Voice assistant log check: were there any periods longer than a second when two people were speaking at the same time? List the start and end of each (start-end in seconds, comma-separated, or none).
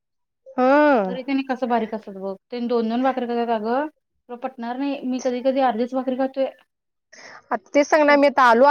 none